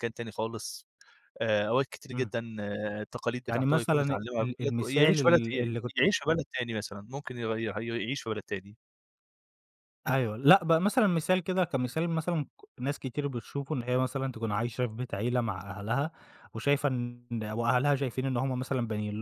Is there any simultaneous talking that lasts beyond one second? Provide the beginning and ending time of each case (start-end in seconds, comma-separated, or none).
3.5-5.4